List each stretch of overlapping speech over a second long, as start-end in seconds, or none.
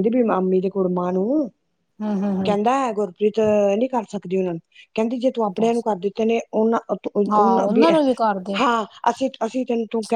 none